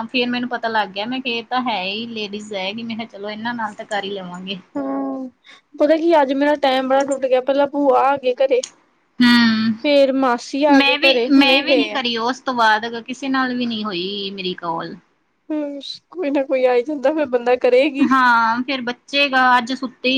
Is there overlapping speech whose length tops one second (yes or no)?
no